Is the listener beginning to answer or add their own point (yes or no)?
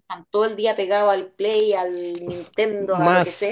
yes